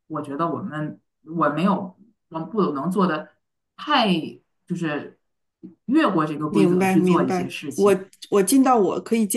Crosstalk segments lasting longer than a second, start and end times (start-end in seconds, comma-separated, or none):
6.5-8.0